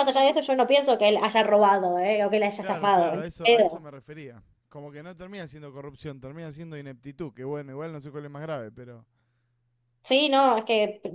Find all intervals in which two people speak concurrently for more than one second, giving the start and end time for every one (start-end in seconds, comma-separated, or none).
2.6-3.9